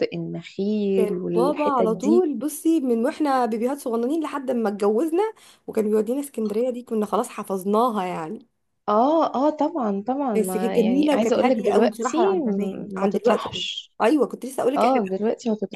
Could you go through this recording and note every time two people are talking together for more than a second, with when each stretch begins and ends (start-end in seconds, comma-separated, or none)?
0.9-2.2, 10.4-13.6